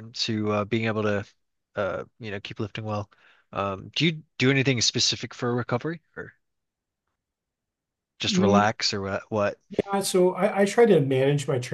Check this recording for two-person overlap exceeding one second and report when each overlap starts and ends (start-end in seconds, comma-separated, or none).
none